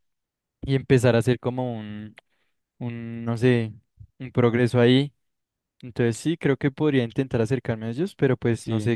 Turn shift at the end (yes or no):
yes